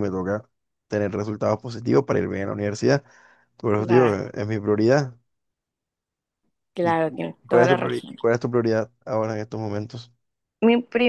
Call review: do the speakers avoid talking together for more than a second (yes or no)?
no